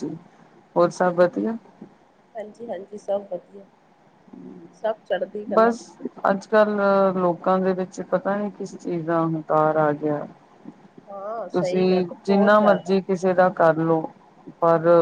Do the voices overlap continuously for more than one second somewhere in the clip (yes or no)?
yes